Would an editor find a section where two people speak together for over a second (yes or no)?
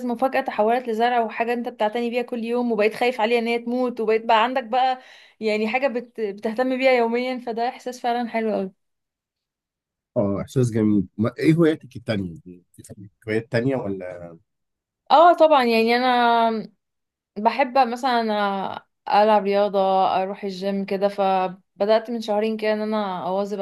no